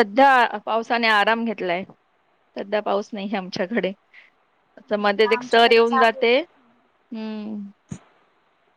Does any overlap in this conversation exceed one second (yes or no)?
yes